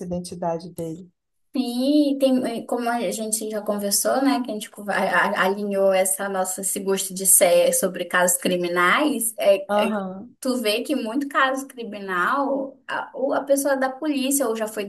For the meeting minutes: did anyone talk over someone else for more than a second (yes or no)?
no